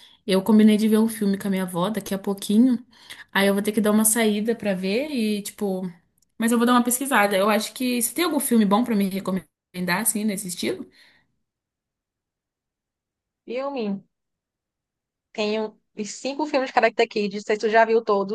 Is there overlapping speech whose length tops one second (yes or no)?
no